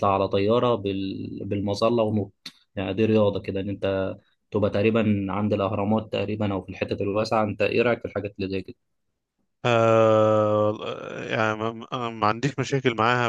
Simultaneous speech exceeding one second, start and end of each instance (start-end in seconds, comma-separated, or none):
none